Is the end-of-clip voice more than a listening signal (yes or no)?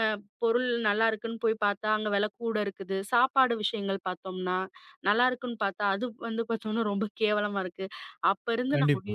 no